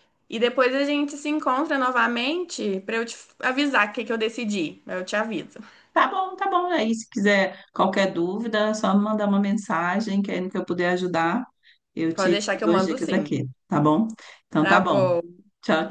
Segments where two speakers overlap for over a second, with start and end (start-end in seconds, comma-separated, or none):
12.1-13.4